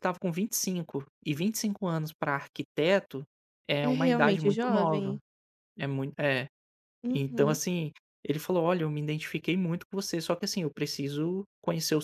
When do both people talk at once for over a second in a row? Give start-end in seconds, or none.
3.8-5.2